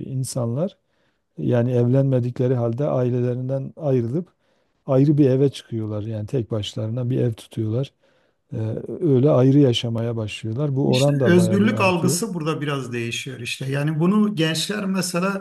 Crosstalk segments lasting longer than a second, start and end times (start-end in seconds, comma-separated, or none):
10.9-12.2